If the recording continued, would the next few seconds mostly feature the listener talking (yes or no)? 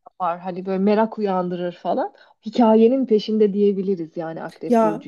yes